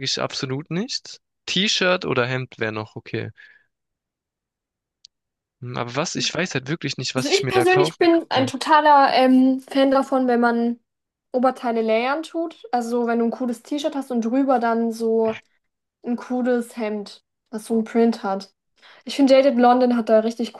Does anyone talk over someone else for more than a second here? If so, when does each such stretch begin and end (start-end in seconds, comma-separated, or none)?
7.2-8.5